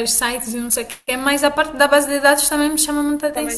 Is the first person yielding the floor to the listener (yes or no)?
yes